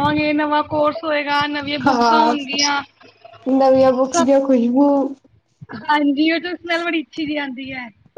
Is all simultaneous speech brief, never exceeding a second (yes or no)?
yes